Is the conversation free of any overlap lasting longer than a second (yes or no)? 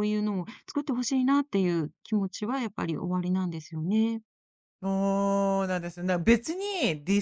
yes